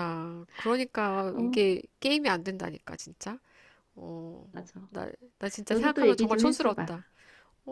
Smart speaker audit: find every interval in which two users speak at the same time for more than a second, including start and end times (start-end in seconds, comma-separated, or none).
5.7-6.9